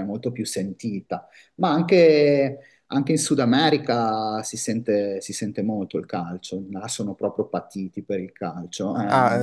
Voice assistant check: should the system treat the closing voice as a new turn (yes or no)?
yes